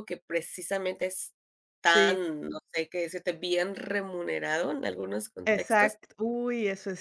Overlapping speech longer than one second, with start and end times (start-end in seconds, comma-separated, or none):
none